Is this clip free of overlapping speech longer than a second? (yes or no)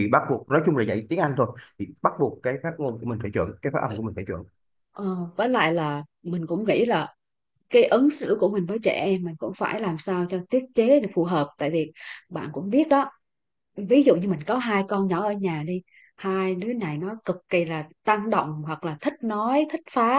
yes